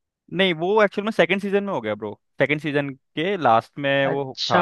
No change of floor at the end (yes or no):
no